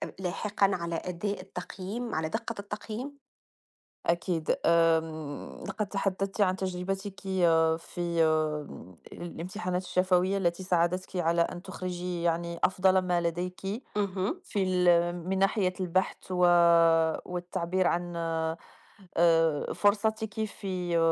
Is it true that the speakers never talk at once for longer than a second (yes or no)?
yes